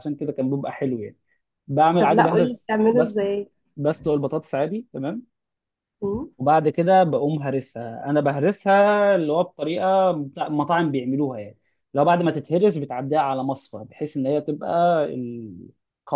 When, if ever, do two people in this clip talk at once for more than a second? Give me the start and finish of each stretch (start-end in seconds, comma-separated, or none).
2.0-3.2